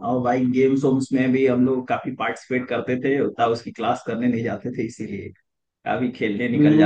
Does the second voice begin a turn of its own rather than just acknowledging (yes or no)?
yes